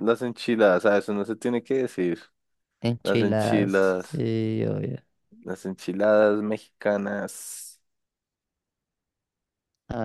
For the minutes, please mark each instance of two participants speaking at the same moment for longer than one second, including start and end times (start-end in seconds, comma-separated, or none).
3.0-4.2